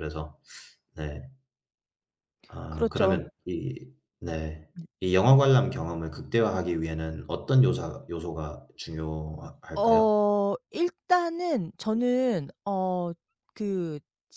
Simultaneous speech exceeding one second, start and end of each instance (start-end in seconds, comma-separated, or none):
none